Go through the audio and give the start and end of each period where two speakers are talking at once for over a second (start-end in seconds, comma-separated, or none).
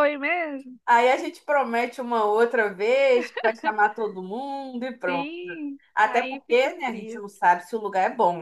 6.0-7.3